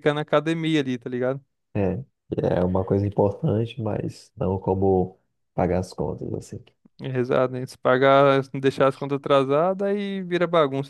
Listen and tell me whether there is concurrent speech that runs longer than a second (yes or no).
no